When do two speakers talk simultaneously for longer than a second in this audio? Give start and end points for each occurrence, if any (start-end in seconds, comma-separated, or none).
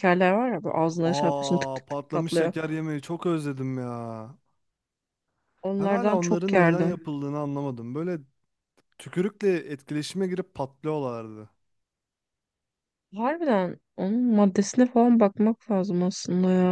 1.0-2.5, 5.8-7.0